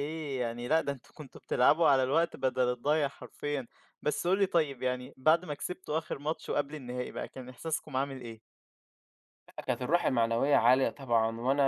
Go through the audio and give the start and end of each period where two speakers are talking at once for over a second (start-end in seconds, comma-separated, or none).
none